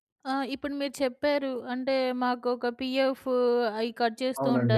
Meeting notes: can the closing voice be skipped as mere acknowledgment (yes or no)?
yes